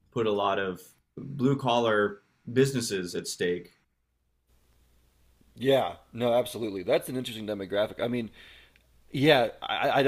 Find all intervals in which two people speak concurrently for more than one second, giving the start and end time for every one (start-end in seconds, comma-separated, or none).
none